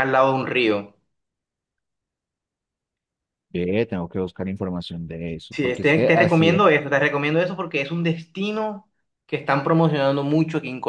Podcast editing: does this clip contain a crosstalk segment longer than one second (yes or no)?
yes